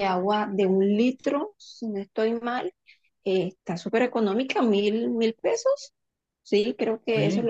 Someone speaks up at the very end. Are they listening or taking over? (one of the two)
taking over